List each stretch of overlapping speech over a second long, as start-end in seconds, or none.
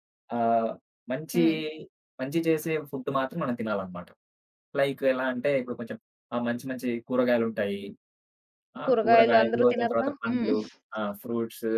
8.8-10.5